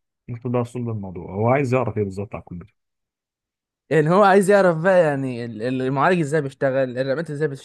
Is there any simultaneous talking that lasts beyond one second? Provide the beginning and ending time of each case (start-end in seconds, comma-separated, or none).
none